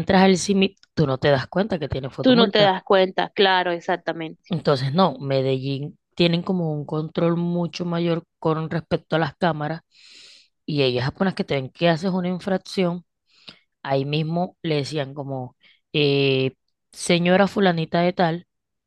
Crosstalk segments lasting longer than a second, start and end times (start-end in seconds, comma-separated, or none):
none